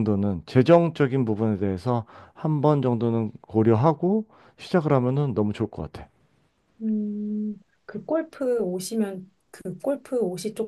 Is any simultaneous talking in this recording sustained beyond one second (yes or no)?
no